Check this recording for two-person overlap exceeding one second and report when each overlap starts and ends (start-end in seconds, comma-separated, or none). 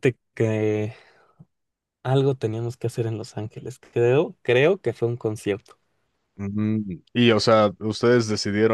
none